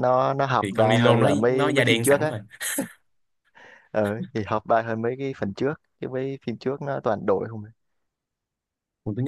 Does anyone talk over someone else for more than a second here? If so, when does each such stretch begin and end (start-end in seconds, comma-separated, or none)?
0.6-2.3